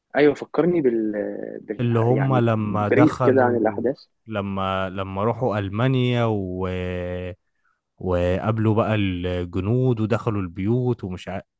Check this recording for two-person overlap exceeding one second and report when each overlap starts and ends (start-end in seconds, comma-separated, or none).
1.8-3.9